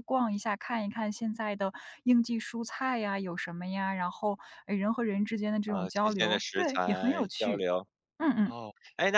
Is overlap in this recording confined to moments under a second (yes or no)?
no